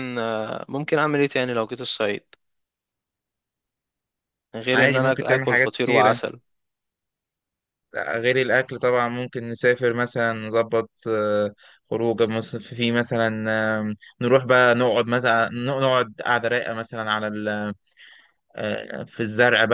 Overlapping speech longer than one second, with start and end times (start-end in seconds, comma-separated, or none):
4.7-6.2